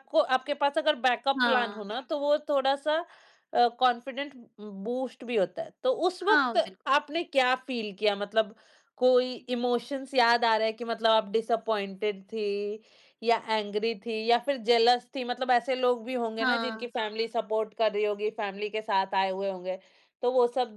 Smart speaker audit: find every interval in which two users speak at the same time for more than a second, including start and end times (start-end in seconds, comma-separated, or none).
none